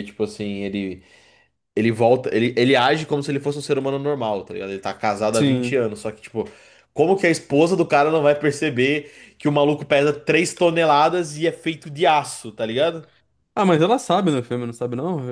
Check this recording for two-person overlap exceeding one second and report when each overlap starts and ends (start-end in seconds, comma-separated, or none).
none